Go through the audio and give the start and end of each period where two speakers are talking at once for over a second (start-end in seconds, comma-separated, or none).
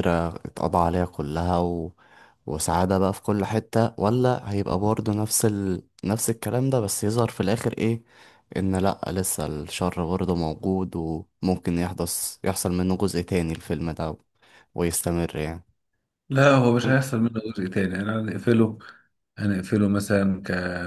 none